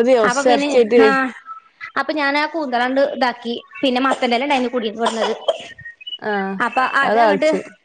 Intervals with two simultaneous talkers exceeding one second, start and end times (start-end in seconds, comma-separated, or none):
none